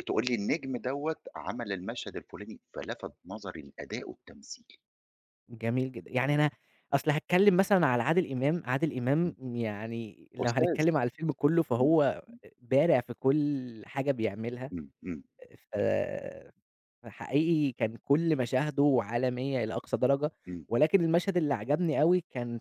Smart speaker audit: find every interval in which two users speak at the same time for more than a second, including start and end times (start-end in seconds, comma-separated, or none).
none